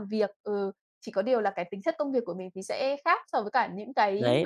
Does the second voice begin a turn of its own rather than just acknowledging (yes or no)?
yes